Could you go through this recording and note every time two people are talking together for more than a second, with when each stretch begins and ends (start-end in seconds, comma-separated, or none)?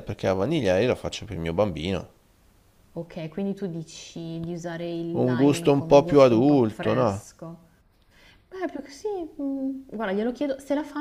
5.1-7.2